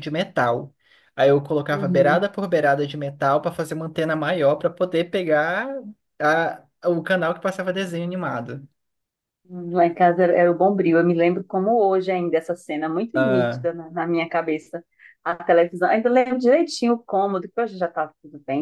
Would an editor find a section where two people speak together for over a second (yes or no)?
no